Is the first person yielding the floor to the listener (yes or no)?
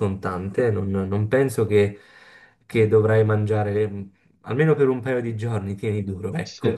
yes